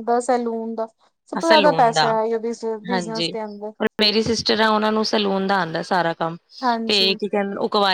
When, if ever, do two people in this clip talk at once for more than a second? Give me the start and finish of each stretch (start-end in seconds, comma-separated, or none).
none